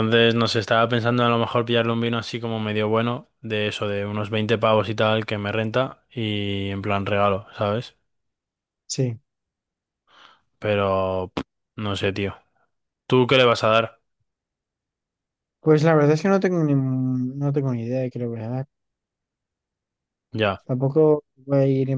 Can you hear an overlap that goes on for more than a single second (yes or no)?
no